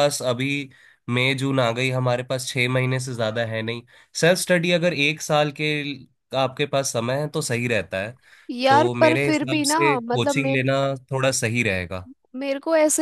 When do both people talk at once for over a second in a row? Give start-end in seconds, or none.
8.7-10.6